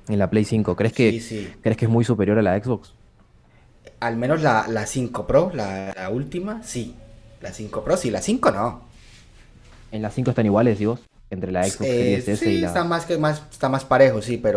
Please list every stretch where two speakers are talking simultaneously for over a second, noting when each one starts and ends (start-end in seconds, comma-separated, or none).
11.6-13.0